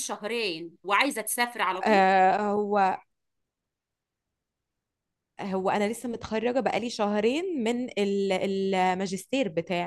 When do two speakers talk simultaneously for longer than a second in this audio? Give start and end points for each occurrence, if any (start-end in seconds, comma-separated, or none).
none